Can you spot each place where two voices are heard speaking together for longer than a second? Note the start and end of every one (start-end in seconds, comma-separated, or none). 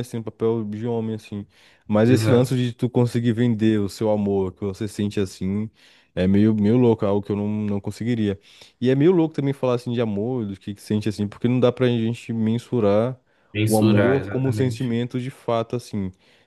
13.7-14.9